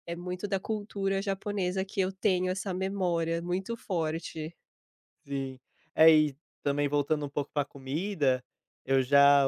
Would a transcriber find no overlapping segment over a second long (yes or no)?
yes